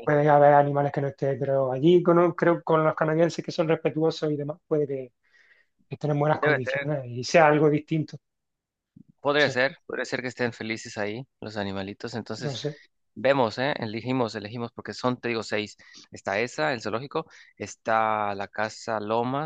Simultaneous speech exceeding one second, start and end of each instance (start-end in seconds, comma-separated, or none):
none